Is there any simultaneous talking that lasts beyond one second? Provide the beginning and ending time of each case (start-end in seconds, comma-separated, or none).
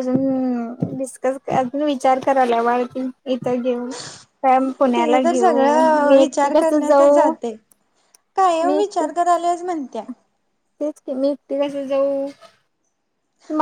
5.0-7.3